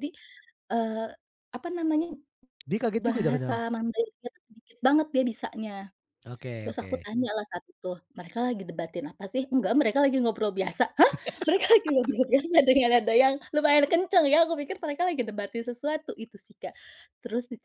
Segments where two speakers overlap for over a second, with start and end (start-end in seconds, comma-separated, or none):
none